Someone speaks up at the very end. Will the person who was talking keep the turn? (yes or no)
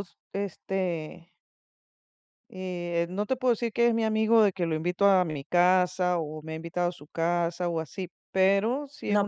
no